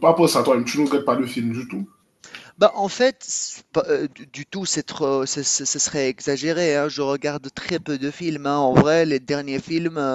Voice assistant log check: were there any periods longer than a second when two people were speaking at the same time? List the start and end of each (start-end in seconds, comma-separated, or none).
none